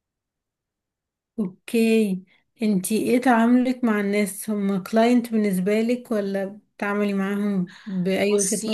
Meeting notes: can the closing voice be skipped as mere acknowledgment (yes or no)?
no